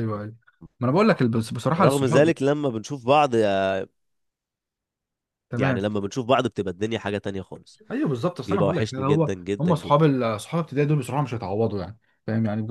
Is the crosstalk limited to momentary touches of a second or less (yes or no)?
no